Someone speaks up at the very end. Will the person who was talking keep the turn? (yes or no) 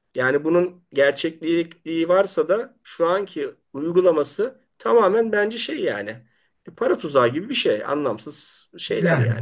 no